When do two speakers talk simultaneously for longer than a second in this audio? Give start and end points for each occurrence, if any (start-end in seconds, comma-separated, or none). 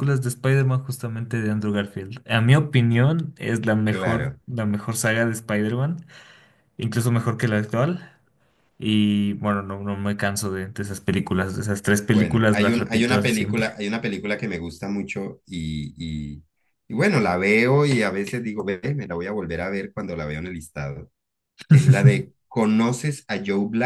12.1-13.8